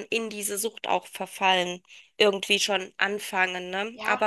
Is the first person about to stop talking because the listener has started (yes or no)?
yes